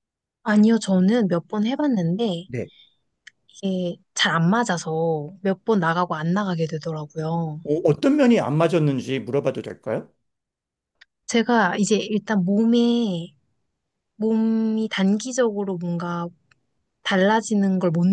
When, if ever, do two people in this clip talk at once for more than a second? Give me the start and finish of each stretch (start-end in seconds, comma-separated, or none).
none